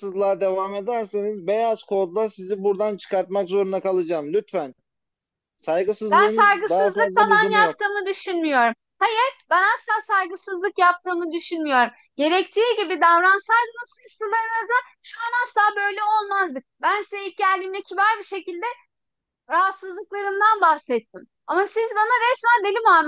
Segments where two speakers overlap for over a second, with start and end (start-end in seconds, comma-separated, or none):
6.1-7.8